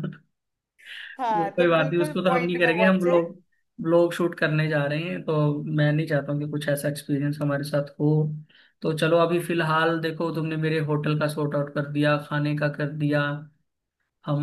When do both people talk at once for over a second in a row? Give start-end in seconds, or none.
1.3-3.2